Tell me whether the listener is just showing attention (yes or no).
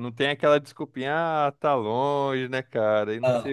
yes